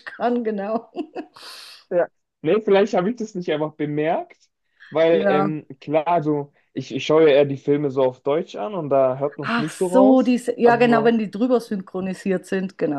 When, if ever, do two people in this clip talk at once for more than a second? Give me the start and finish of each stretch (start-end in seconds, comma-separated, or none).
9.4-11.1